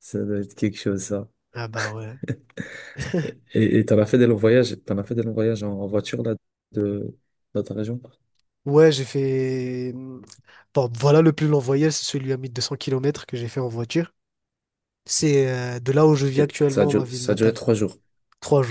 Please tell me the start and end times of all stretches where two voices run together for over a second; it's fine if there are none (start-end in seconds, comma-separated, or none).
16.4-17.6